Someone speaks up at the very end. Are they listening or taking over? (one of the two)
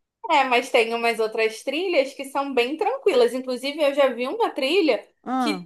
listening